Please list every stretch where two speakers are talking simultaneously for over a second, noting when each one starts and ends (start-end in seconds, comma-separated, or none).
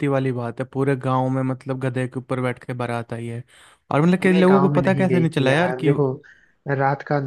4.2-5.9